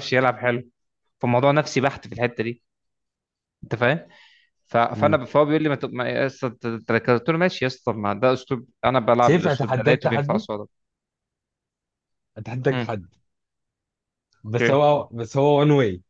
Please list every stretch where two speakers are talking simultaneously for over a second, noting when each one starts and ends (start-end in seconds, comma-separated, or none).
9.2-10.5